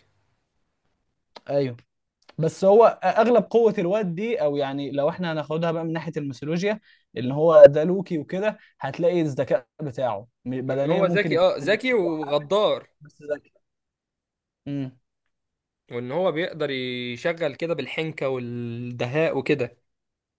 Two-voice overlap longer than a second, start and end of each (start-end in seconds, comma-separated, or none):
10.7-12.5